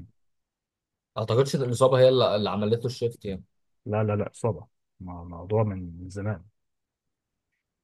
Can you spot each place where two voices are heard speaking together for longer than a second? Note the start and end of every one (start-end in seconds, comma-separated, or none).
none